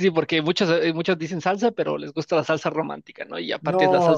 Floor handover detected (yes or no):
yes